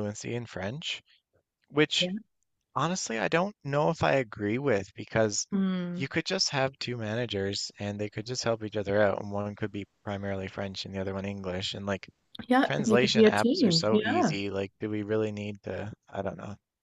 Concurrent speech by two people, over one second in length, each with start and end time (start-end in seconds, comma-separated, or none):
12.7-14.3